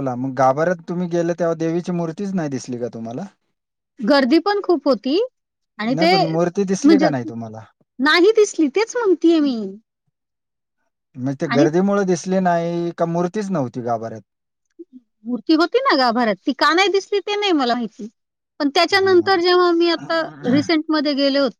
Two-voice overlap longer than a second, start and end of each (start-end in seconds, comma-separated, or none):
none